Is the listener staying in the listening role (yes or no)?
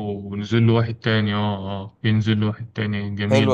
no